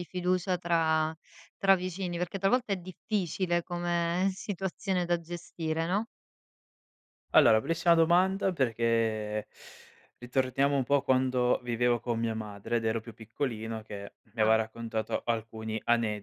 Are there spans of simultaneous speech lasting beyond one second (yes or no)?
no